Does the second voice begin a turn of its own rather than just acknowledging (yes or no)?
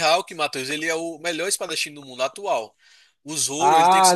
yes